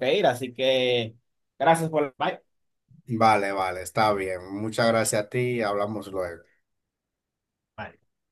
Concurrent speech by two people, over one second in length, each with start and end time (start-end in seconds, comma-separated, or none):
none